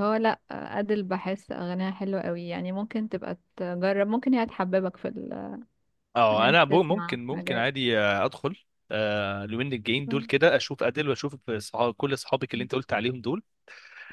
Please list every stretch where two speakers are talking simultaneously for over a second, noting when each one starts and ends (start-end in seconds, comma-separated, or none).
6.3-7.7